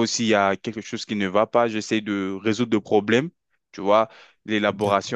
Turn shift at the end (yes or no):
no